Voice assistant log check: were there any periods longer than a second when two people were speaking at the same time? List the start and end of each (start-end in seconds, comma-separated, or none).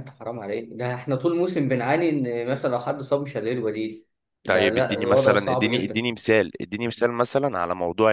4.5-6.0